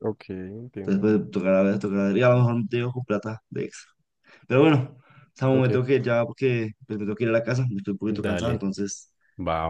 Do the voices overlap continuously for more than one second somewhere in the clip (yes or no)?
no